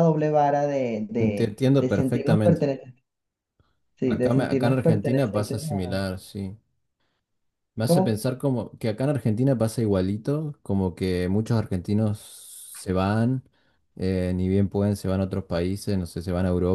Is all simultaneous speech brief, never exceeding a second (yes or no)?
no